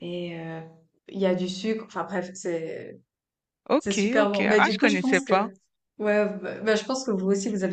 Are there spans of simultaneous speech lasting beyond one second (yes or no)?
yes